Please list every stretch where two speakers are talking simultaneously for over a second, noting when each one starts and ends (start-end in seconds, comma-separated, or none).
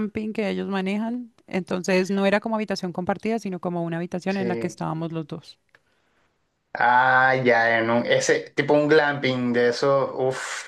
none